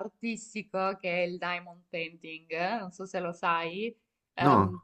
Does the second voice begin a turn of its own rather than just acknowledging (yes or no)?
no